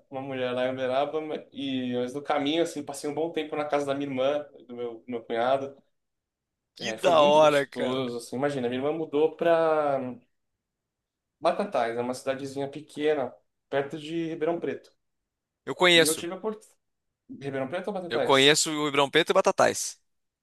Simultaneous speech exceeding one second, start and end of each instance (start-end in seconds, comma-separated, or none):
6.8-8.0